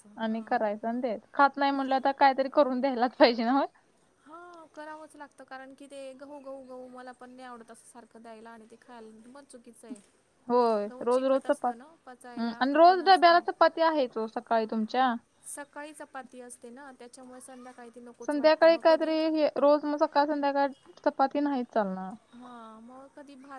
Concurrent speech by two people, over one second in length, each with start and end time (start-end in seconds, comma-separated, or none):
10.9-13.4